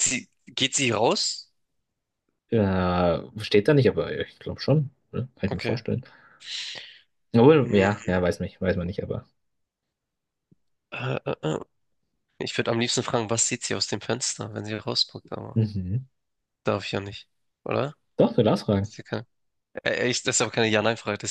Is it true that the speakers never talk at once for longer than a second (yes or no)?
yes